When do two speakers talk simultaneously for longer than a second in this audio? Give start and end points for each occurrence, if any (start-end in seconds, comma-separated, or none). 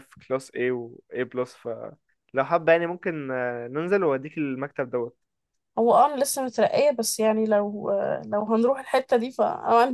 none